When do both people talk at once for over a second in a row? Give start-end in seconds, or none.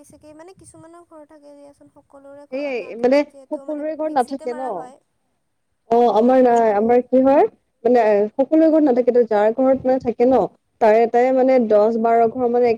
2.4-4.6